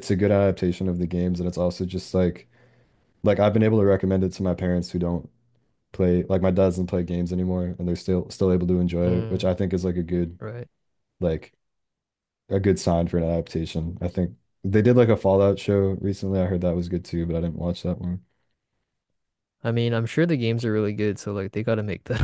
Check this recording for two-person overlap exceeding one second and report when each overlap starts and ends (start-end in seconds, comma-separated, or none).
none